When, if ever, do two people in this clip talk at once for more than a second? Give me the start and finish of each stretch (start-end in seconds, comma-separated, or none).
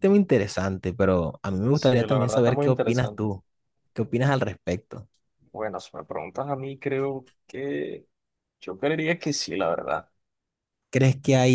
1.7-3.3